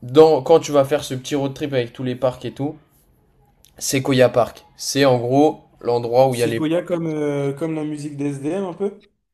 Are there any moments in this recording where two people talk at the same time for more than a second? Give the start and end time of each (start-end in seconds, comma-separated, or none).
none